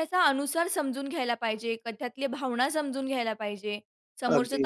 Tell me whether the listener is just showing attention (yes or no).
yes